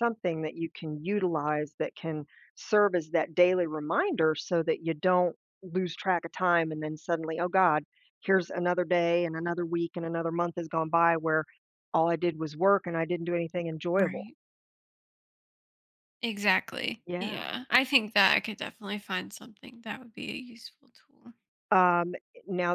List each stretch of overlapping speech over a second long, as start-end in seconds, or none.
none